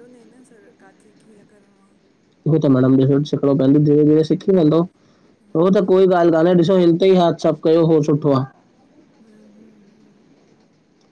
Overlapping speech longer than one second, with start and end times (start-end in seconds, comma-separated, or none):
none